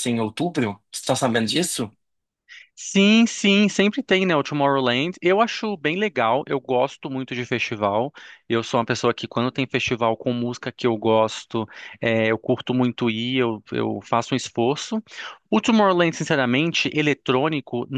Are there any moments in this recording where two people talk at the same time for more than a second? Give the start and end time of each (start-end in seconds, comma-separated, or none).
none